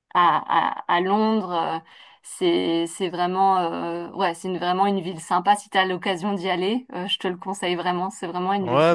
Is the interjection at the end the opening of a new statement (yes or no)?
yes